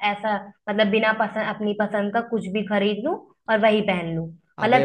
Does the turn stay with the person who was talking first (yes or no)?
yes